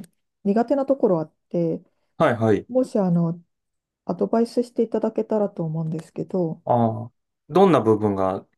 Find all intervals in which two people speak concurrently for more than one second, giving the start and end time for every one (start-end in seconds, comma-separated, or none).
none